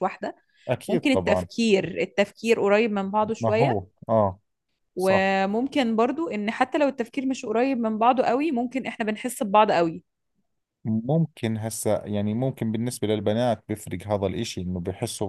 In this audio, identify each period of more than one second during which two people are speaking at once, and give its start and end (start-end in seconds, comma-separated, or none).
none